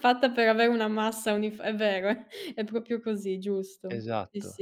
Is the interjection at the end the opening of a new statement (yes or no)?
yes